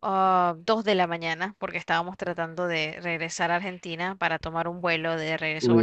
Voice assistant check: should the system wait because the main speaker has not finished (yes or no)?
no